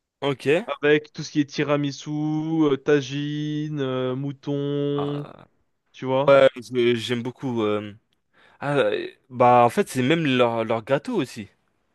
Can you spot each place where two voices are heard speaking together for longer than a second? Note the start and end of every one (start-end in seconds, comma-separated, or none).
none